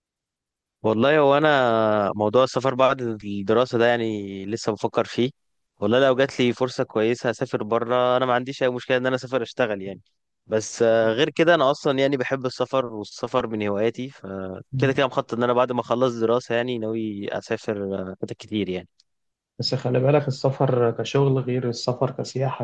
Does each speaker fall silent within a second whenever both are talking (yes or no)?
yes